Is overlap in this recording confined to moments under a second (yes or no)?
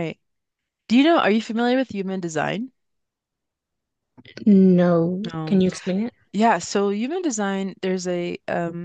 yes